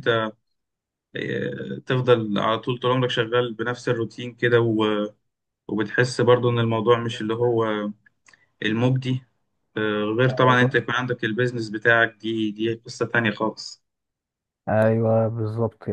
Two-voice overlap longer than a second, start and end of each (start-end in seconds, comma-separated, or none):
none